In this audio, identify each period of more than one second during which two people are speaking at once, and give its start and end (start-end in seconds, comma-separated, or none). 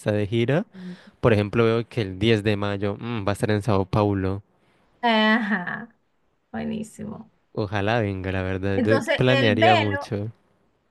8.7-10.1